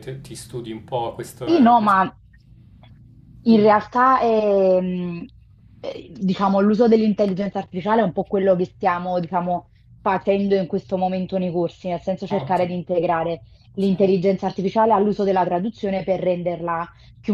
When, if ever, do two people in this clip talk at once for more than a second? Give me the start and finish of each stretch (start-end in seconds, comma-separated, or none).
none